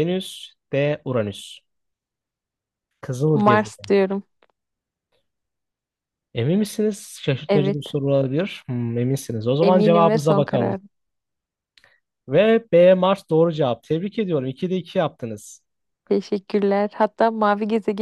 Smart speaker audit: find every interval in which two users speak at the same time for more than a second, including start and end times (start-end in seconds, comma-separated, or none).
9.6-10.8